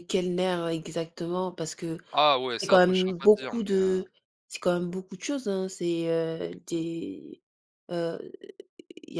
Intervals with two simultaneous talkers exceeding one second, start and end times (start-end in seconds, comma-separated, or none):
2.6-4.0